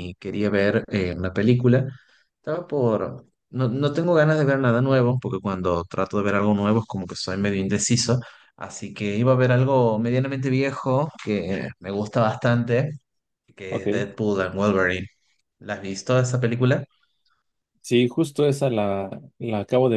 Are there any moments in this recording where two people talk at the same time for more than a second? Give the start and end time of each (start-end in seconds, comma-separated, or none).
none